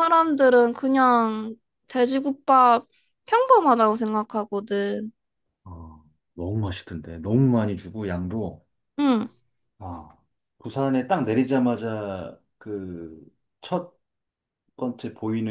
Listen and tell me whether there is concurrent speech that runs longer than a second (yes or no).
no